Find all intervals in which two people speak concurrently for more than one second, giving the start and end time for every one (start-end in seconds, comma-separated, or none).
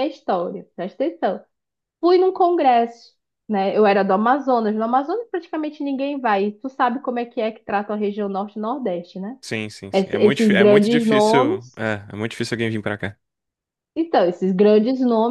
9.9-11.8